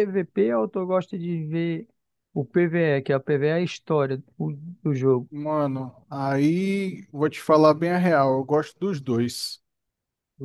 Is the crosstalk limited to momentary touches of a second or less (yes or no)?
yes